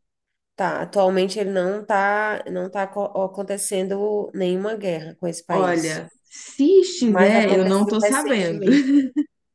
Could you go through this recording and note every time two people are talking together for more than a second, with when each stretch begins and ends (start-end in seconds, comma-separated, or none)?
7.0-8.7